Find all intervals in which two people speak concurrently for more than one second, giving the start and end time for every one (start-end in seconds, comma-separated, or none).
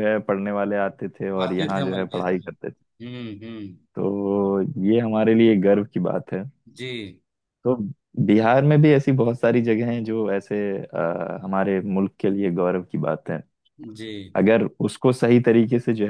1.4-2.7